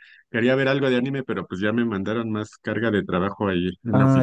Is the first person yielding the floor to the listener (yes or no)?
yes